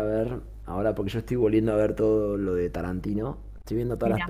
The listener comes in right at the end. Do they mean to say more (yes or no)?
no